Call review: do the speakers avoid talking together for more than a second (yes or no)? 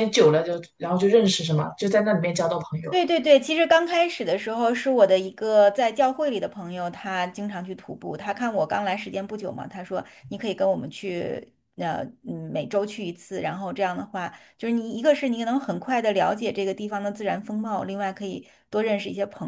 yes